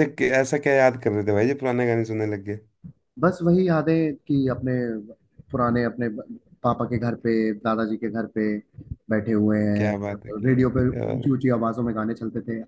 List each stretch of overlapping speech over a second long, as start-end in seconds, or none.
9.8-11.4